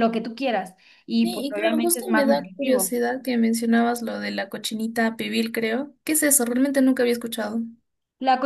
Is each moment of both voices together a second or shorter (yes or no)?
no